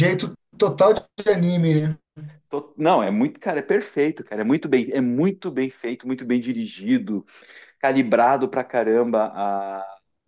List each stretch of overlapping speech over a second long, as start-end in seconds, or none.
none